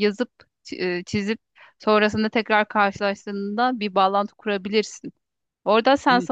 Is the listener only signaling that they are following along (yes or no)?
no